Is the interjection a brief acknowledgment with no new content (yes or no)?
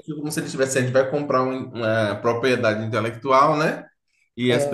yes